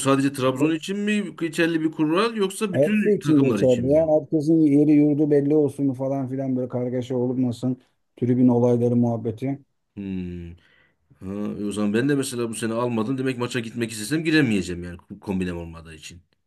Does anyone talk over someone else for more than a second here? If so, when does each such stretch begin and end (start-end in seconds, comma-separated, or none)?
2.7-4.1